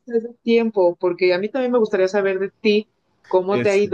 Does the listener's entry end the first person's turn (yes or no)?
no